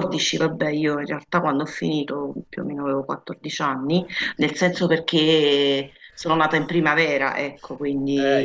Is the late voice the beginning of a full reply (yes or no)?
yes